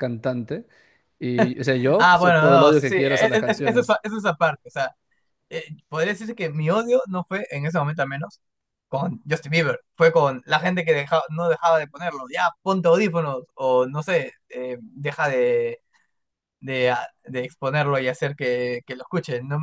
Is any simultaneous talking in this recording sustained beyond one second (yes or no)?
yes